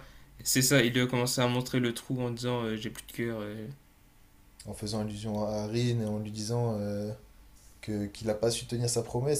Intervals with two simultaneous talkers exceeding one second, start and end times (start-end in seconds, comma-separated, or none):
none